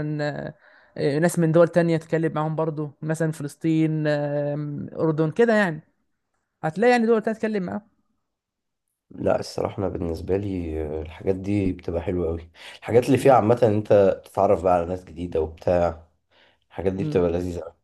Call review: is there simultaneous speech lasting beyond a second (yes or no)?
no